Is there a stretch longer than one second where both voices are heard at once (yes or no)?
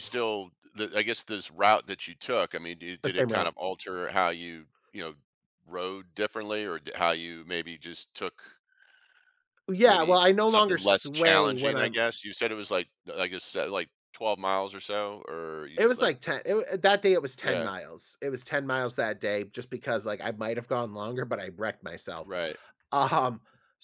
yes